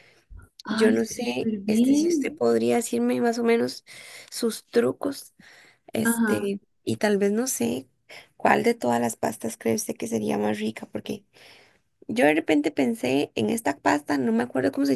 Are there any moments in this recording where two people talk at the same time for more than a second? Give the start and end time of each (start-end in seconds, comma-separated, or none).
0.7-2.3